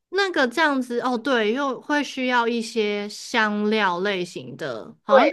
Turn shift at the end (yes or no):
yes